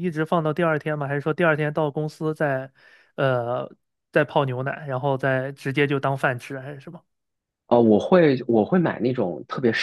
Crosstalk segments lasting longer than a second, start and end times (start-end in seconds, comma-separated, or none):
none